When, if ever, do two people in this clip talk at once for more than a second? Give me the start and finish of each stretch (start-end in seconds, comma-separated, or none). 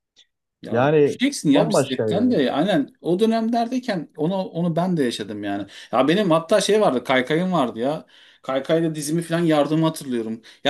0.7-2.4